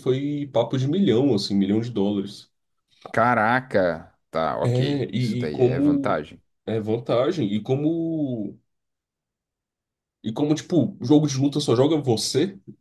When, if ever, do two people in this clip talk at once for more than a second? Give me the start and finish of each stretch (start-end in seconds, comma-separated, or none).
4.6-6.2